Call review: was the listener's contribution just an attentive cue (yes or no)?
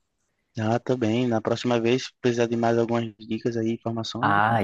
no